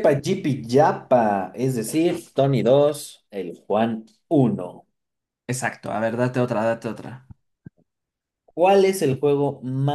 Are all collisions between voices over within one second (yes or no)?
yes